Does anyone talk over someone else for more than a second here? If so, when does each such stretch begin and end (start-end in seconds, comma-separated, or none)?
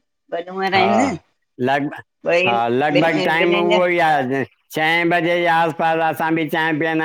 2.5-3.9